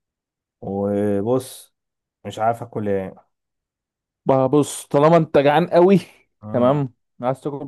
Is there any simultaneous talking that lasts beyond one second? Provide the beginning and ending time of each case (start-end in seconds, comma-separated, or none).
none